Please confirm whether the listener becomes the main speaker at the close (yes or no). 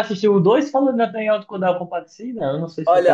yes